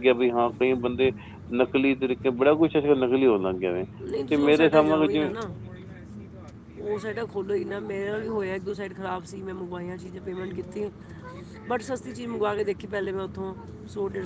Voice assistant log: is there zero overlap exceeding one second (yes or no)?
yes